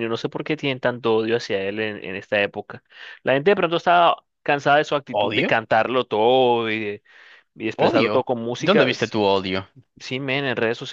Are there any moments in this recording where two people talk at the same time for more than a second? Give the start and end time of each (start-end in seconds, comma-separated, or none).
7.8-9.2